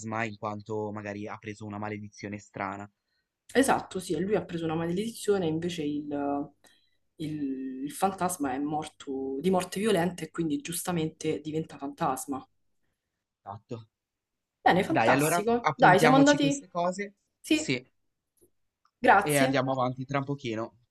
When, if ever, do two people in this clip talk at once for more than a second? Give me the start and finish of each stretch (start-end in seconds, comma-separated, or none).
14.8-16.6